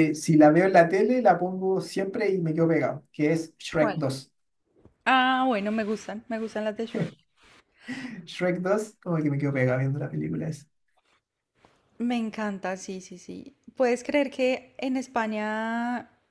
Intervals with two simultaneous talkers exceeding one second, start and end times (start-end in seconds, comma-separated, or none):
none